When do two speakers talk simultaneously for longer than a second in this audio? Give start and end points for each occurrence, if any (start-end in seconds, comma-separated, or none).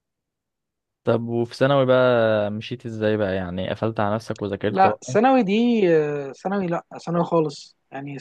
none